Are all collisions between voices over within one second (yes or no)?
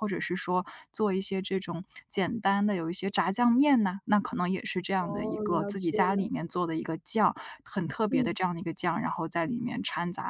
no